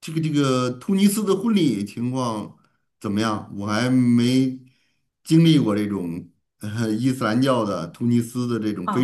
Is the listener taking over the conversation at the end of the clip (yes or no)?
yes